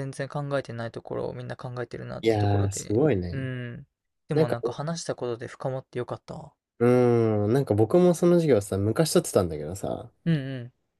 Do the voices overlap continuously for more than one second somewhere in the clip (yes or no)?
yes